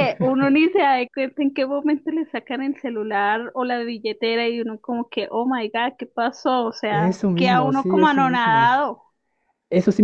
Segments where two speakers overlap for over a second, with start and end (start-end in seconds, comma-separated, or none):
6.9-8.8